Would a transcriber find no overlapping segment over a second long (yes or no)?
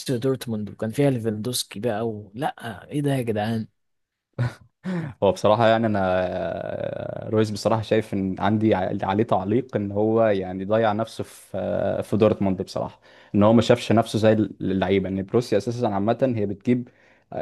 yes